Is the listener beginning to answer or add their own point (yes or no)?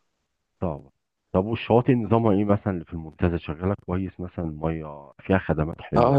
yes